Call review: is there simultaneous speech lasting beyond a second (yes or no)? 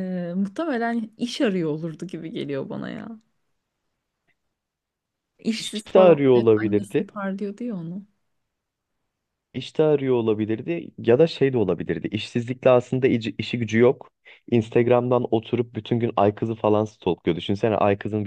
yes